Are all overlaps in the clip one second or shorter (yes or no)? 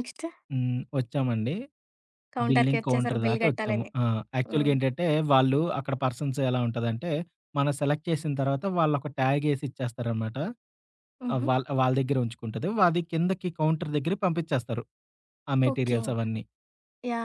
no